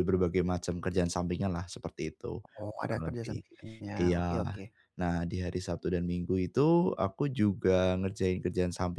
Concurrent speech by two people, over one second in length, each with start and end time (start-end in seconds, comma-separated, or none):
none